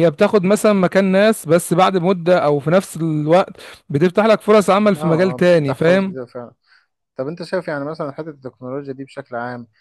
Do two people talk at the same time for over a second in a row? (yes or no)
yes